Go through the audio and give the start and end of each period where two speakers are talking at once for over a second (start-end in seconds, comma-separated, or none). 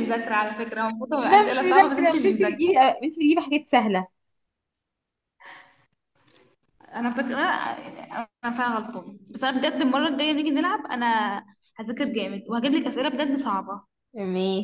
1.2-2.6